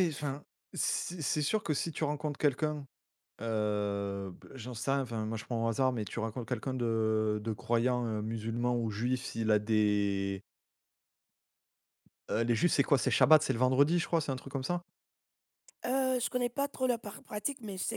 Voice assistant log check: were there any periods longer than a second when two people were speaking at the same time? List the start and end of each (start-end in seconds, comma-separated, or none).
none